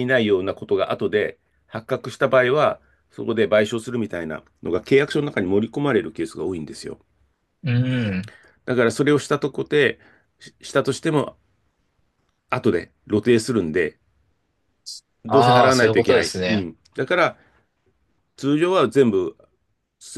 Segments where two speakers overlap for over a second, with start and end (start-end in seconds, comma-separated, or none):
15.3-16.7